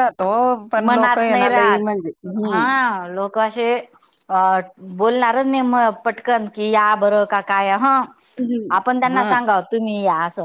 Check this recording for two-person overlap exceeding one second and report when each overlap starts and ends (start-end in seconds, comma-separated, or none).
0.9-2.6